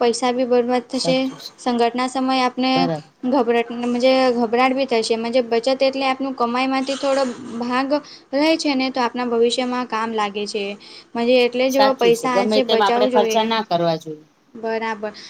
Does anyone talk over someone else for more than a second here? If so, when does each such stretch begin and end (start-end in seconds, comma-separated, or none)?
11.8-13.5